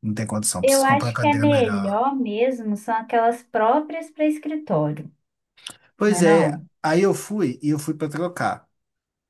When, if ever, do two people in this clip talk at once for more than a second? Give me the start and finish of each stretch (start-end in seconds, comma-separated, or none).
0.6-2.0